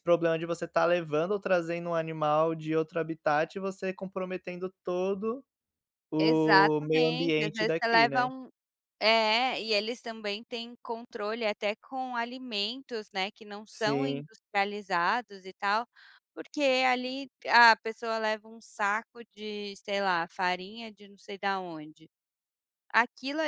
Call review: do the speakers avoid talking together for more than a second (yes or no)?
no